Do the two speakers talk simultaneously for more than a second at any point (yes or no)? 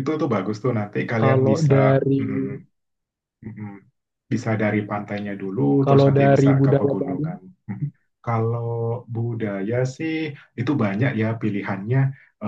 yes